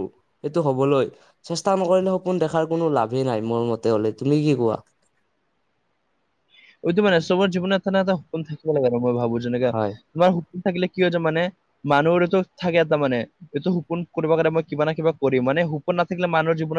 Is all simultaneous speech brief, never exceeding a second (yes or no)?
yes